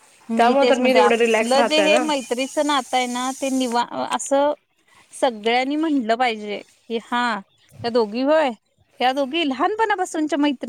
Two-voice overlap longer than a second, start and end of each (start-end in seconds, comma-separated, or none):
0.6-2.0